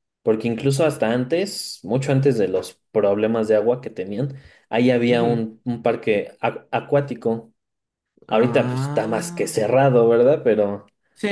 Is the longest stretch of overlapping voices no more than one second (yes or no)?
no